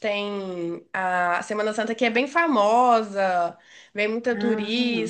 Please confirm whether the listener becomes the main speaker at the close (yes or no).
no